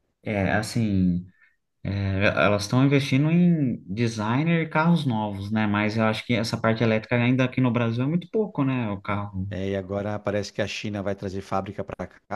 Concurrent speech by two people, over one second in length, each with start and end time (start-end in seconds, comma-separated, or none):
none